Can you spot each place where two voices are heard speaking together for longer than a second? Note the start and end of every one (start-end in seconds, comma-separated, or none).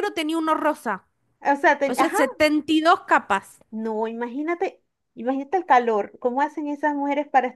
none